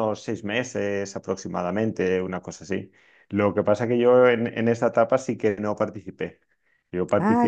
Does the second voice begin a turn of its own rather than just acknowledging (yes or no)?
no